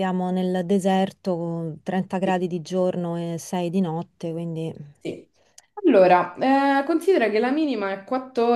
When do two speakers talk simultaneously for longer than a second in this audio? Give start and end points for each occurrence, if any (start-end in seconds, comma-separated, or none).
none